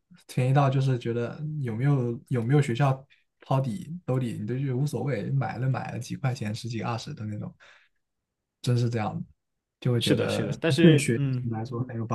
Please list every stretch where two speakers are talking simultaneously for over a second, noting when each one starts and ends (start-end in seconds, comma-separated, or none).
10.0-11.5